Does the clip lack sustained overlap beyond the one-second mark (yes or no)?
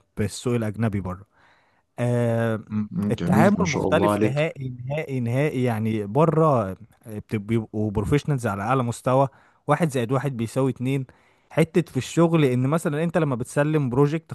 no